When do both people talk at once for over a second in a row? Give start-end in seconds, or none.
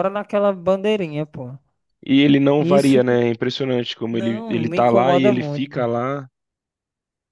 4.1-5.8